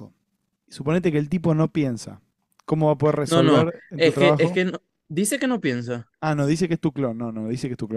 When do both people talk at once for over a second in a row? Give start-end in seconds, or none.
3.2-4.6